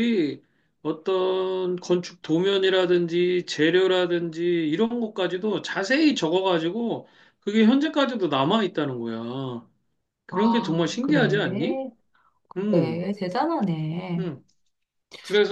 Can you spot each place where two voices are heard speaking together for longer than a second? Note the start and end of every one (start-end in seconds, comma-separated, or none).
10.3-11.8